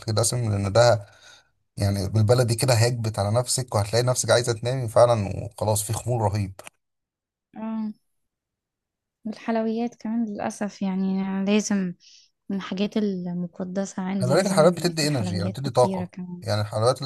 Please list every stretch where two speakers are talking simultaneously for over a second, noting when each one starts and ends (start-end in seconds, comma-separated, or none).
14.2-16.4